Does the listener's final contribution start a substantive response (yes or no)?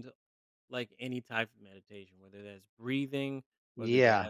no